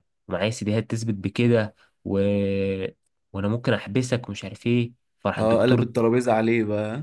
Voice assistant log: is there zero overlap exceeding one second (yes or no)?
yes